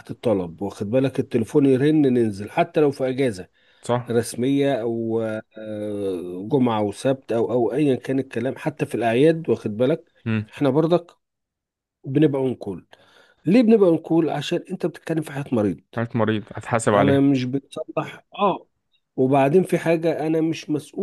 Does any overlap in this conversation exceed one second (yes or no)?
no